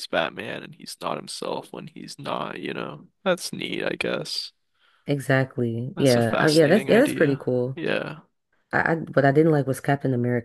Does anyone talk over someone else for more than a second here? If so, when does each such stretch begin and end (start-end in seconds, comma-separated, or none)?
5.9-7.8